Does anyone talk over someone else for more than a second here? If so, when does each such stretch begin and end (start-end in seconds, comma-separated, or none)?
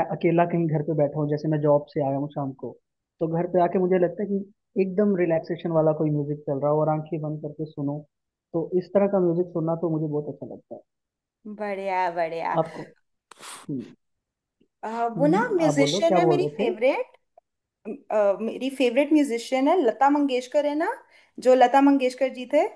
15.2-16.7